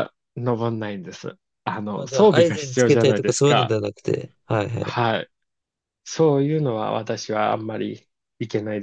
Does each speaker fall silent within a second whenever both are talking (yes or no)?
no